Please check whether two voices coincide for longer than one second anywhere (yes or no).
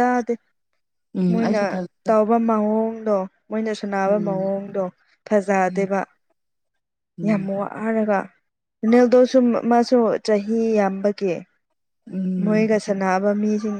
no